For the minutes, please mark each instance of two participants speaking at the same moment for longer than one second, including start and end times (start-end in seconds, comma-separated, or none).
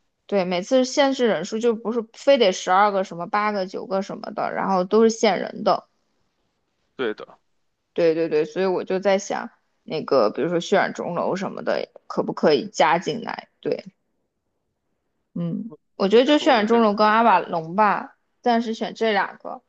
16.0-17.5